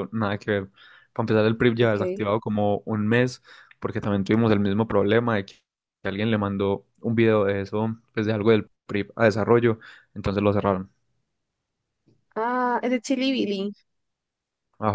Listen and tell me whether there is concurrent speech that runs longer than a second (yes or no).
no